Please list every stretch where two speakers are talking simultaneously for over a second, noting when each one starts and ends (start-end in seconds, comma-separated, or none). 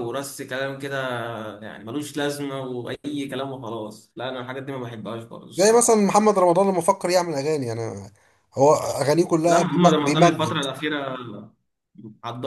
9.4-10.6